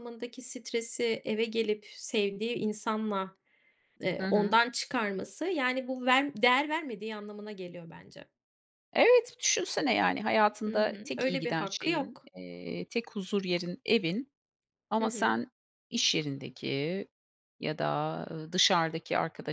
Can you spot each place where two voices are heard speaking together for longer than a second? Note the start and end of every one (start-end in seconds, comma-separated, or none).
10.7-12.3